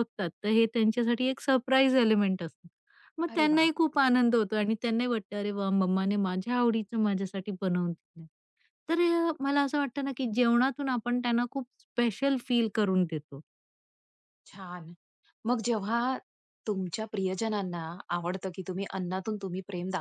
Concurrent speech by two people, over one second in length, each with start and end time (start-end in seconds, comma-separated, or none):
none